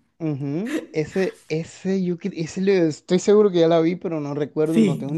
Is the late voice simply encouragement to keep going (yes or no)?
no